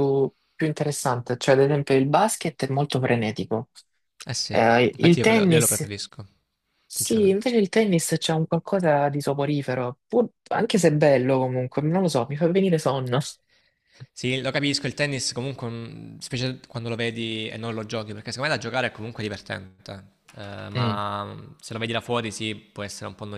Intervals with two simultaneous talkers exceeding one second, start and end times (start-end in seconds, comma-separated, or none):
4.5-5.9